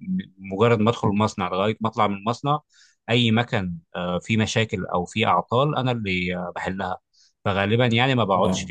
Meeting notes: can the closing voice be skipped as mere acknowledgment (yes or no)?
yes